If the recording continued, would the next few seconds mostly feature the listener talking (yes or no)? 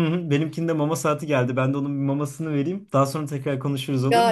yes